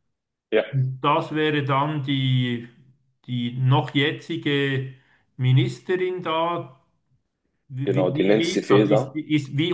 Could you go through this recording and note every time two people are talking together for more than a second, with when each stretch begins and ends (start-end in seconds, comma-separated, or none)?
7.8-9.2